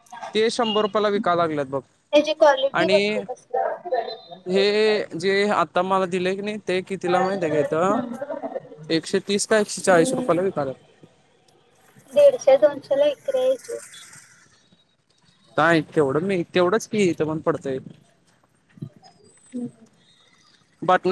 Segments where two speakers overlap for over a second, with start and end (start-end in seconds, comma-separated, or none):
none